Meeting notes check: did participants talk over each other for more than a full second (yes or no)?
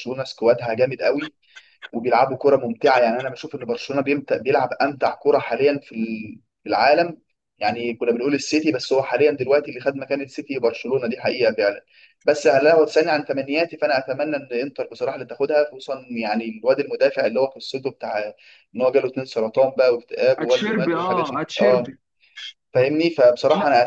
yes